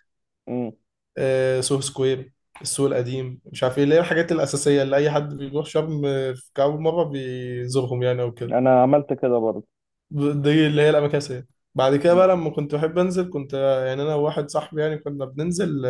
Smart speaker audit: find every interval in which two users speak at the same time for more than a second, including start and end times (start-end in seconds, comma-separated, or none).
none